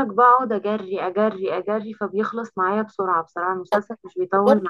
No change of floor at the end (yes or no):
no